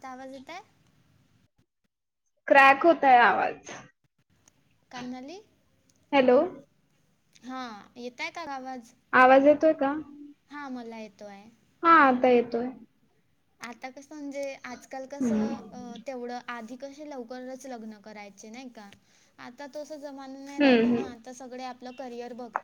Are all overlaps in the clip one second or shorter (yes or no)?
yes